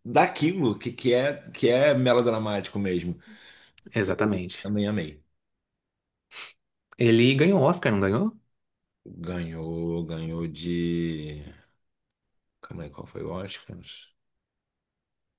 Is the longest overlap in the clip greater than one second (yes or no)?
no